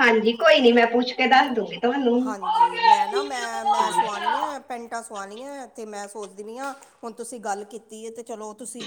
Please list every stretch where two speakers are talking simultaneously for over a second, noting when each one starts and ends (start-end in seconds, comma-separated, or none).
2.2-3.9